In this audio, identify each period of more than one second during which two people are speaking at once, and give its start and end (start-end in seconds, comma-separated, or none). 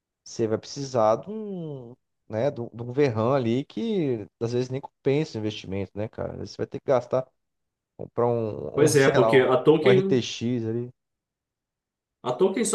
8.7-10.2